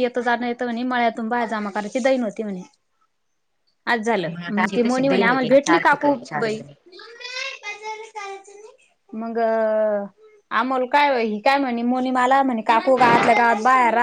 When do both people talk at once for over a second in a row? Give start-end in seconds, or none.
4.4-6.6